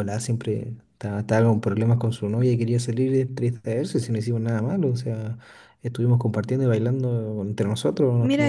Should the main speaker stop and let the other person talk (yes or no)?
yes